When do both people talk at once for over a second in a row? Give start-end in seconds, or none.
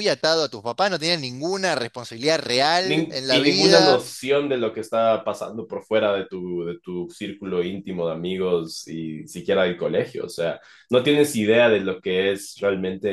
2.8-4.0